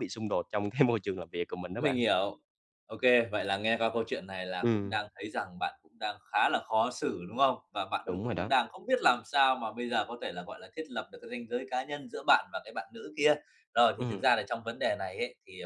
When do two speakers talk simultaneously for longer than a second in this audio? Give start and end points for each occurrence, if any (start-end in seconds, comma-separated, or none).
none